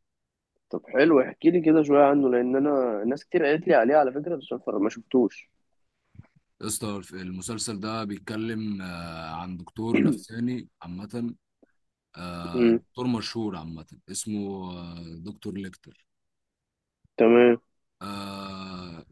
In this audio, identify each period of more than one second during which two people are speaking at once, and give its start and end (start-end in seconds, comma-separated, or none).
none